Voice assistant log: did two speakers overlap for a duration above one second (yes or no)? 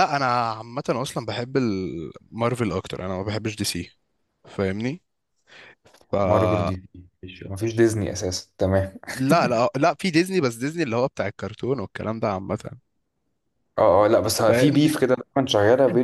no